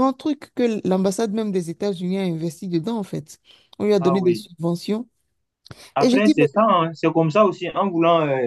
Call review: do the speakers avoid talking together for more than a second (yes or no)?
yes